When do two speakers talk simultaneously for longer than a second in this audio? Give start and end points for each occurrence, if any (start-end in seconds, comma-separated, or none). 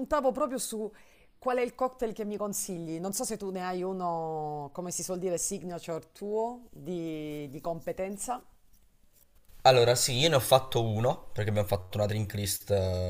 none